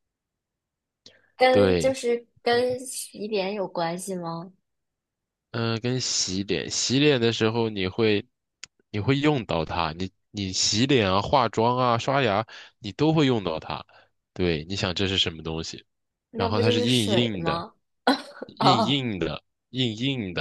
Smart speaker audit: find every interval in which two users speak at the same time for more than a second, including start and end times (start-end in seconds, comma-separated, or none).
16.4-17.6